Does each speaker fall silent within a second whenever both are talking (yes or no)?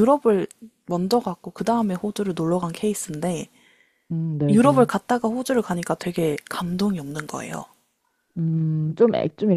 yes